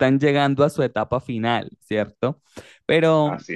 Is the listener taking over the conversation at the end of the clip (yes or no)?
no